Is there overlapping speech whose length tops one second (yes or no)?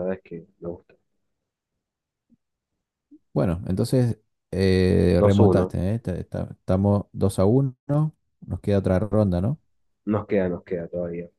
no